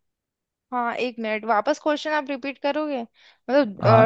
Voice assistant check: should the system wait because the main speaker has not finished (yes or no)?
no